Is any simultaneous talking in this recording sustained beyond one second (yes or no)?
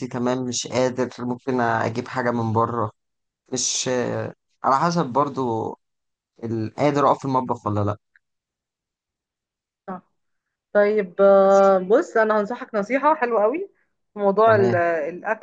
no